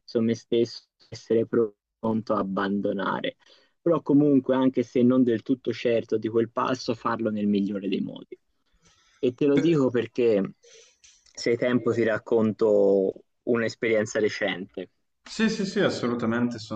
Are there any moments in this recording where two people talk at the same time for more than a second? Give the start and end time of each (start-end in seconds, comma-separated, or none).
none